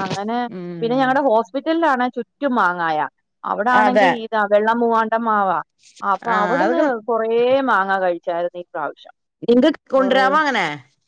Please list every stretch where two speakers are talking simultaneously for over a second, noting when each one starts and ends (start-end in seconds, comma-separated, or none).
none